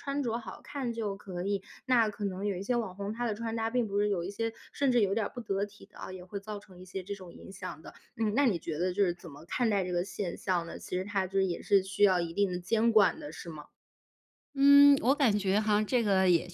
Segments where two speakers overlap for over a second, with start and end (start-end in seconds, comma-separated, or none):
none